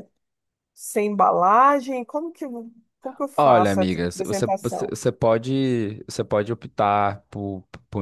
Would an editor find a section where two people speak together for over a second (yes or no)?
yes